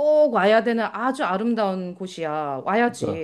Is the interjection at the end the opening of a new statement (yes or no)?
yes